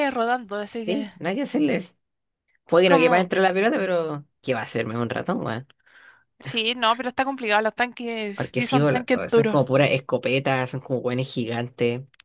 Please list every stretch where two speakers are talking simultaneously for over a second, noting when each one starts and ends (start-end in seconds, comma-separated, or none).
8.3-9.6